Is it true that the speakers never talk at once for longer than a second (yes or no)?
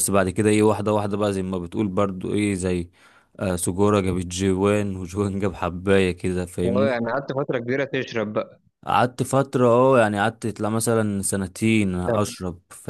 yes